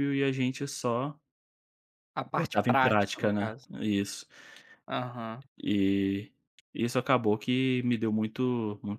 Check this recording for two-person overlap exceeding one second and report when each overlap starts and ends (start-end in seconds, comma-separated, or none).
2.3-3.6